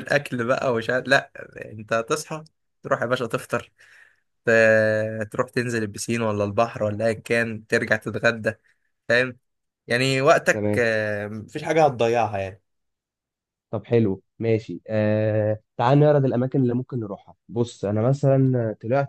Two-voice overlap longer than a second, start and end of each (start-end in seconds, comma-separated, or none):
none